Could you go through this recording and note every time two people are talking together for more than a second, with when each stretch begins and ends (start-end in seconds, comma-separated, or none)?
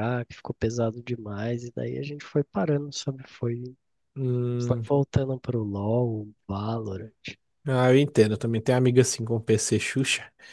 none